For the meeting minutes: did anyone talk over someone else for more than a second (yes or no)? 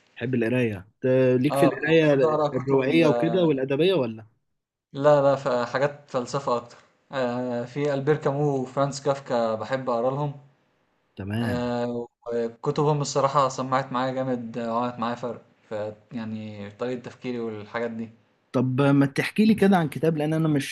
yes